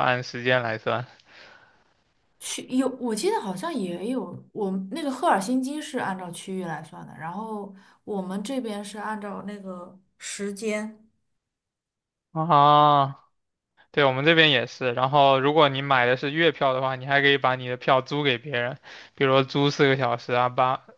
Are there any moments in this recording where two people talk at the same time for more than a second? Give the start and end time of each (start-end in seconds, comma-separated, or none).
none